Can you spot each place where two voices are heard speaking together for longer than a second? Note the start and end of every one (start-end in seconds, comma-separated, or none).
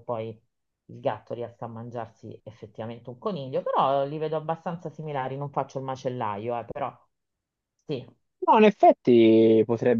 none